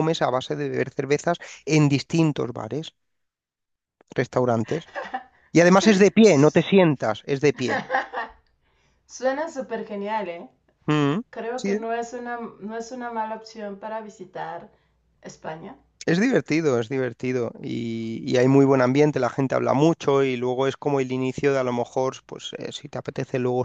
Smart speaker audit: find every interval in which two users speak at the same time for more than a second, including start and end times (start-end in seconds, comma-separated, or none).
none